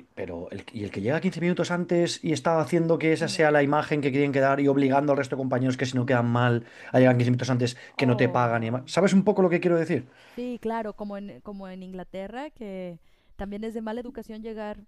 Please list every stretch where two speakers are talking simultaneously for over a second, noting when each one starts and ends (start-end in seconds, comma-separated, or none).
8.0-9.3